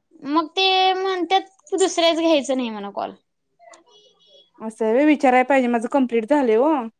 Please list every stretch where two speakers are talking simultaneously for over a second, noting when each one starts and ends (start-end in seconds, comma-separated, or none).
none